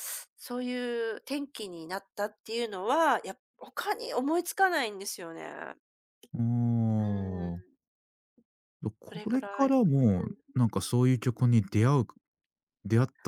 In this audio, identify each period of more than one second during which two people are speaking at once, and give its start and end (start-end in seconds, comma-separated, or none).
9.1-10.4